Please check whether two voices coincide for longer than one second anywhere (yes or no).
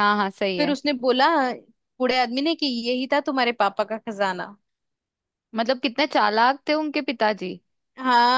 no